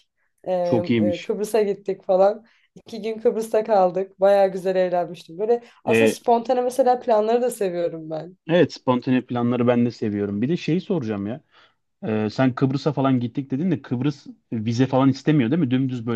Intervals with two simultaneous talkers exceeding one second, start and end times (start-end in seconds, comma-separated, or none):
none